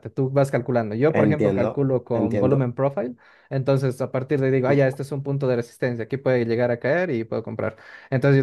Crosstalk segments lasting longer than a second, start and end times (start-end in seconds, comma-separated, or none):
1.1-2.7